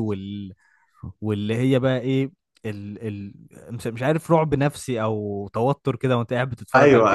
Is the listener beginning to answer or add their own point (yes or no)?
yes